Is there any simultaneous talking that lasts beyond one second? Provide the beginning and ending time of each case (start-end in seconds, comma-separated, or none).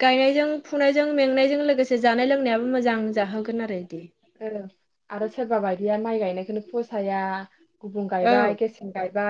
none